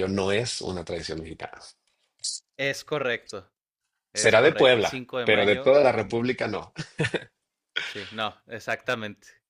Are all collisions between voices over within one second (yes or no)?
no